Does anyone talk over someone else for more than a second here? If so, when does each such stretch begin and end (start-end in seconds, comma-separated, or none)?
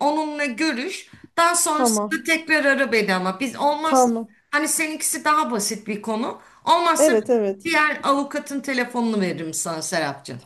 none